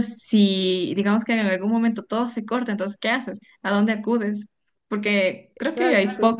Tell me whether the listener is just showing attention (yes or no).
yes